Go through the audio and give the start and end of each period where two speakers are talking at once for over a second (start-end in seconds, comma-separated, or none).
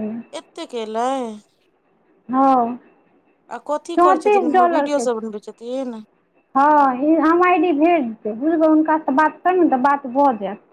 4.0-5.4